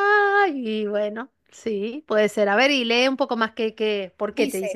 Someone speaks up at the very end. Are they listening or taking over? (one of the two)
taking over